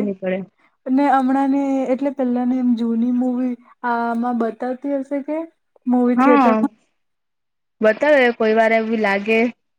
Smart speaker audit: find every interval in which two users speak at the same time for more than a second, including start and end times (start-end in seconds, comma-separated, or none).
none